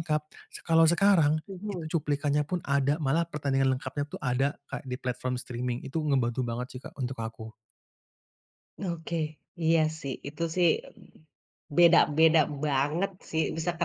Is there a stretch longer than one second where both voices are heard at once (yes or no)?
no